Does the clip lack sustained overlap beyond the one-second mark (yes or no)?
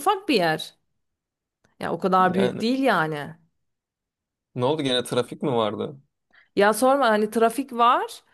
yes